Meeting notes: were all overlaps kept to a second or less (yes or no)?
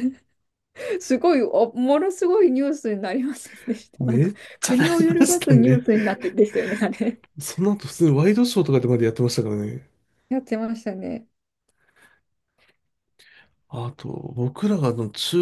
no